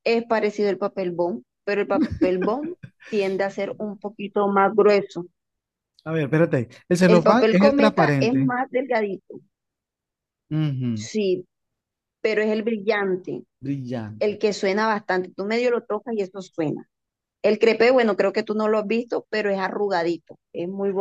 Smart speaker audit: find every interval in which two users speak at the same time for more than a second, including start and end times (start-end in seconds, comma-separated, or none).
7.0-8.5